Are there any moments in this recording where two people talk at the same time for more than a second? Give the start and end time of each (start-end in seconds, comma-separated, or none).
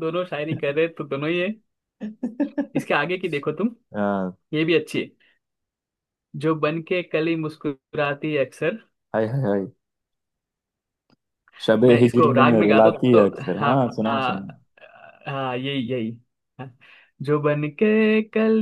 11.8-14.4